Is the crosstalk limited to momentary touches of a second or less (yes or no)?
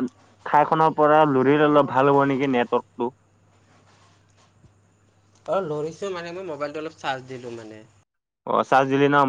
yes